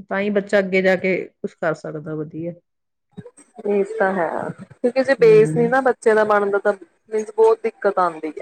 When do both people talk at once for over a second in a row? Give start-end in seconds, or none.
none